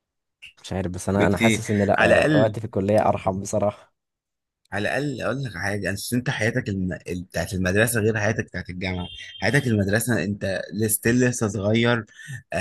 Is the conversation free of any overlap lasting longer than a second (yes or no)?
no